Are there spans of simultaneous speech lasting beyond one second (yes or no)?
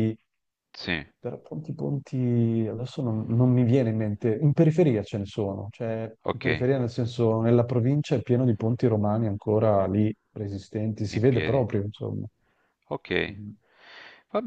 no